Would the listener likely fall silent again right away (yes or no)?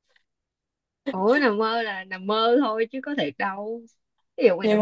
yes